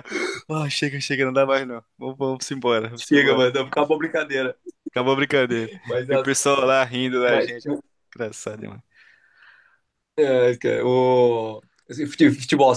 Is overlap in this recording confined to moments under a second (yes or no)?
yes